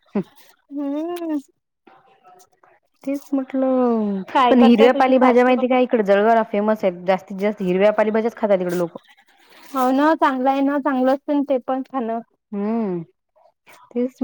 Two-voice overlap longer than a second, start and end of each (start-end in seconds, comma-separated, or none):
4.3-5.8